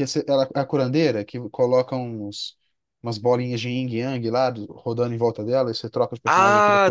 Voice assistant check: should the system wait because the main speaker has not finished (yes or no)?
no